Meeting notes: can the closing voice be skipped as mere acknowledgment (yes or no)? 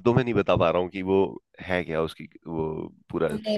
no